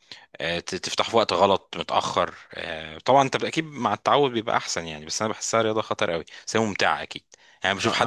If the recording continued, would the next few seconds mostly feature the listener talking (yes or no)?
yes